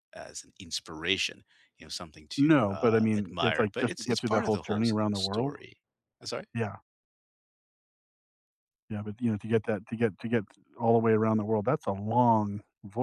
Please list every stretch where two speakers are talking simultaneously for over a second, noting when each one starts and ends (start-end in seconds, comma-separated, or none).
2.4-5.5